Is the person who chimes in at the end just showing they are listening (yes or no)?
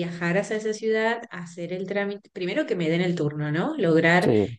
yes